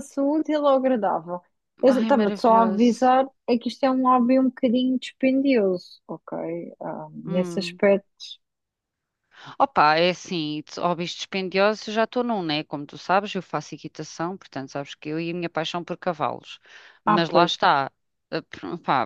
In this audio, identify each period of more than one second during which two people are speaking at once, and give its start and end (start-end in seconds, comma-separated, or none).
1.9-3.1